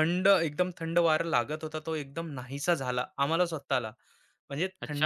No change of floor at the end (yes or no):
no